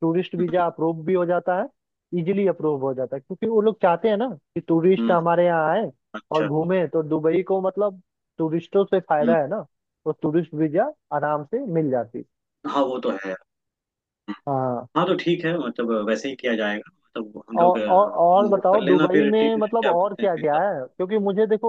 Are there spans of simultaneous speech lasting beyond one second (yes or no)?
yes